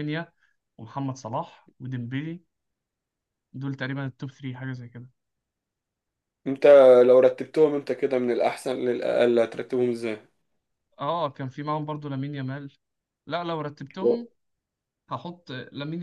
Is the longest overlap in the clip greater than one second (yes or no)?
no